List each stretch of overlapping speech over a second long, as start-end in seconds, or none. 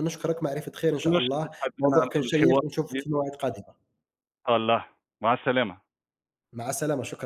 1.1-3.0